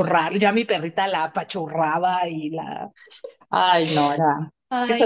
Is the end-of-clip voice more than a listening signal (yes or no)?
yes